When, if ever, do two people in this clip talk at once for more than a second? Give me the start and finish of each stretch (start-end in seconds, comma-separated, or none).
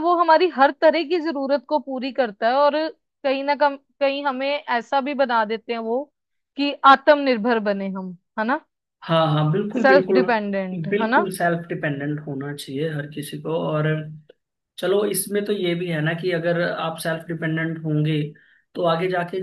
none